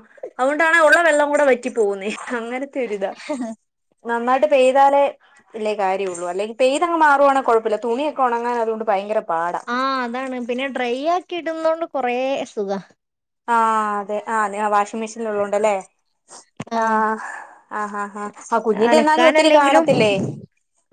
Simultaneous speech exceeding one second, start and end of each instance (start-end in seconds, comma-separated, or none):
18.9-20.1